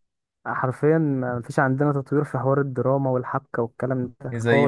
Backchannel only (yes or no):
no